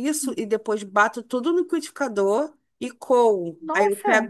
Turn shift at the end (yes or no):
no